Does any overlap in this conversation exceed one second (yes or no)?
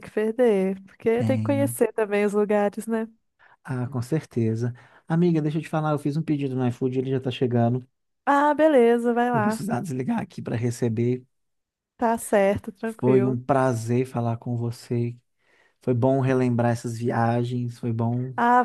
no